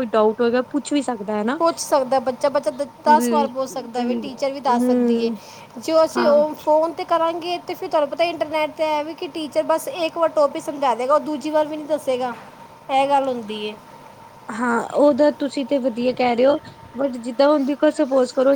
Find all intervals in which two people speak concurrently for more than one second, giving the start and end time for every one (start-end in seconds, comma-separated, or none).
4.0-5.3